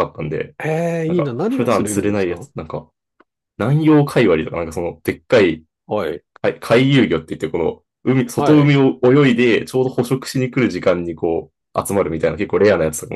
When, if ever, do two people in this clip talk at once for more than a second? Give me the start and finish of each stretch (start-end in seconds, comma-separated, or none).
1.1-2.5